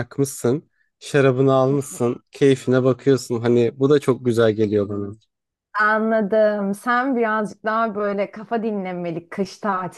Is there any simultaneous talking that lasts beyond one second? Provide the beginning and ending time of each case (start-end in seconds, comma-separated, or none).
none